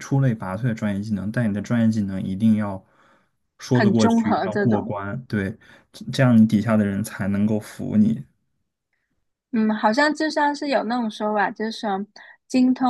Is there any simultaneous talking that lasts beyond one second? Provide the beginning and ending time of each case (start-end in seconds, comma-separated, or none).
3.7-4.9